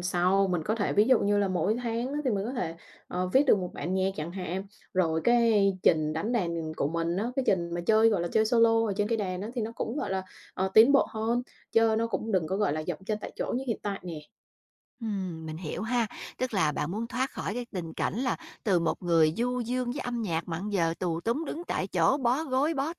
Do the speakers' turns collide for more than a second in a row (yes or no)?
no